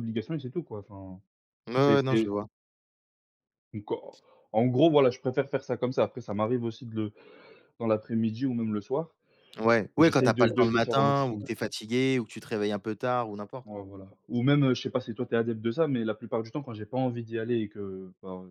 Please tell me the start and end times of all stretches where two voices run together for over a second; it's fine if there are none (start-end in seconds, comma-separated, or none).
10.0-11.5